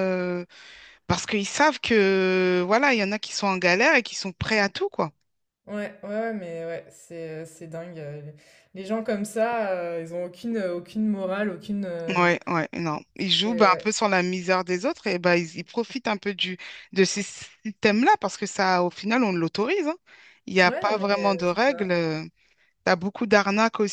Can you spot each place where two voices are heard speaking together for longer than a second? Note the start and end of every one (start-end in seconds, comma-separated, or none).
20.6-21.9